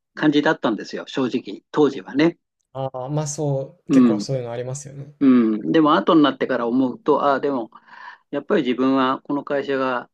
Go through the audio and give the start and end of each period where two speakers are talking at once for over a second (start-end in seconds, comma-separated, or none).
none